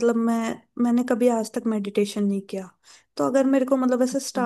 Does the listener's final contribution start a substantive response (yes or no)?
no